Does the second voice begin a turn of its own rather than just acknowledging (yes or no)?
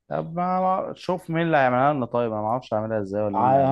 yes